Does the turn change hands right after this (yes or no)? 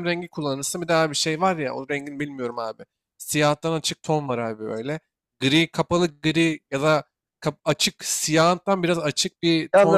yes